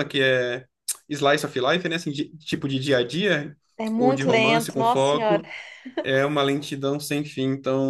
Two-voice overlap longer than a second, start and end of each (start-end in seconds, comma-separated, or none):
4.0-5.5